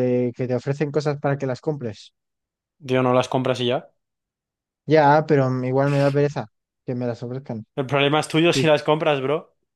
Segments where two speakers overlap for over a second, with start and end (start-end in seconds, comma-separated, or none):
none